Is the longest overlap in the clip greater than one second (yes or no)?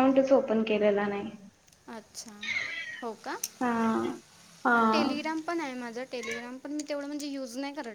no